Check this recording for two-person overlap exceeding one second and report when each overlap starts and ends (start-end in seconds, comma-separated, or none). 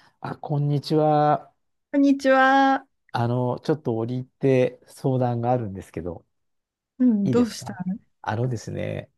none